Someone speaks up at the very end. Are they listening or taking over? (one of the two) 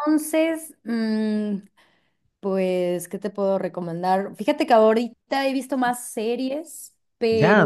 taking over